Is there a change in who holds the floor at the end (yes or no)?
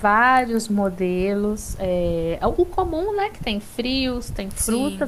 no